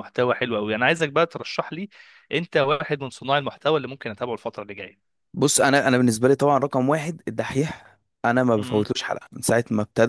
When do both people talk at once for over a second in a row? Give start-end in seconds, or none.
none